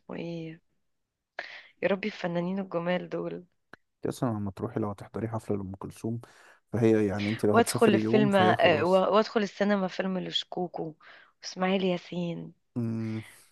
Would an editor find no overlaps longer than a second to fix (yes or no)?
no